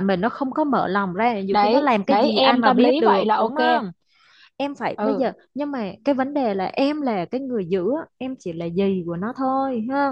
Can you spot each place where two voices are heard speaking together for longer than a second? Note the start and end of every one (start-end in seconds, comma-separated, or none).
1.5-3.8